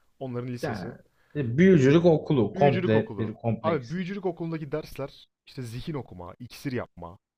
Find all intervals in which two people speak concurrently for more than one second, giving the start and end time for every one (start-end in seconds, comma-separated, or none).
2.5-3.9